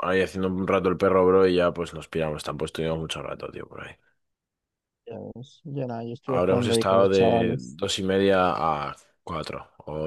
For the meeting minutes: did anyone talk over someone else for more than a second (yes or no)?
yes